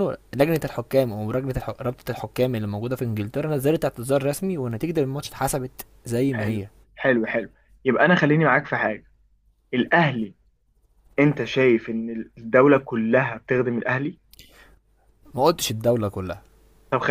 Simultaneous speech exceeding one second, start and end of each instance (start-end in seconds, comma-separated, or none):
none